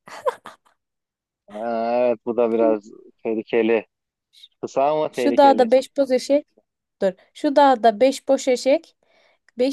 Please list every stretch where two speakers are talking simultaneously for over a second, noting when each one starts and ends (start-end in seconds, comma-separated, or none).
none